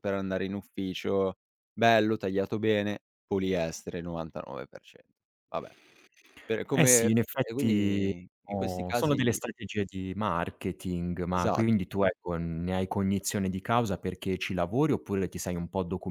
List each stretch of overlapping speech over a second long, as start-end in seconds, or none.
6.7-9.4